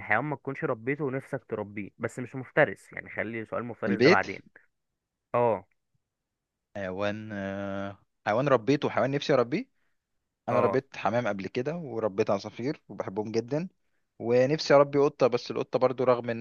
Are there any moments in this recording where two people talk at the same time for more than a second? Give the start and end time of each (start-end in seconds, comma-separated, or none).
none